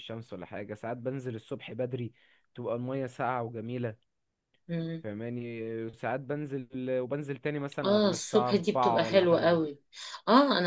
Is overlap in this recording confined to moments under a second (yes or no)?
no